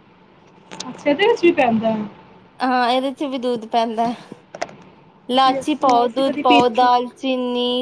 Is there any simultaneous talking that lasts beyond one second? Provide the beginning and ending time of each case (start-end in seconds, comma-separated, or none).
5.5-6.9